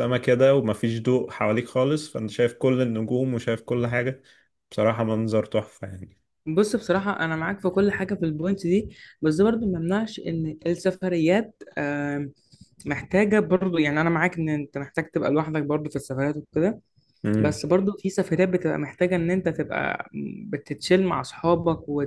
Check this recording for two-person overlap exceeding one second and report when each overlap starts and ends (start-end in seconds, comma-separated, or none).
none